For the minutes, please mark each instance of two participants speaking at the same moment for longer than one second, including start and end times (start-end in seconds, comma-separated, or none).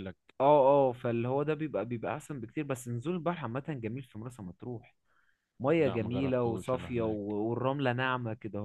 5.8-7.2